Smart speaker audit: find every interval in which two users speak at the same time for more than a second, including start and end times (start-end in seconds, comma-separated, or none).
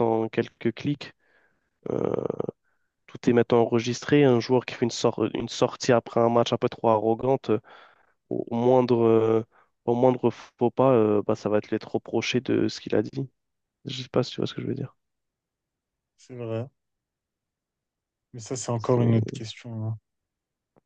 none